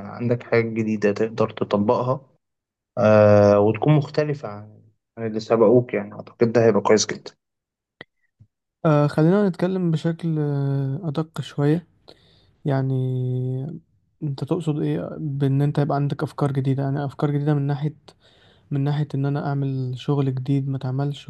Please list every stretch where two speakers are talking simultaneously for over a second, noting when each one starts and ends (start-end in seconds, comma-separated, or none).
none